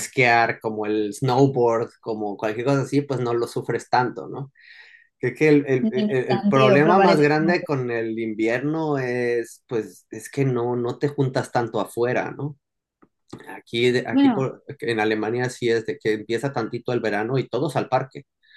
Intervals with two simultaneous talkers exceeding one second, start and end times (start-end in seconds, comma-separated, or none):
5.8-7.7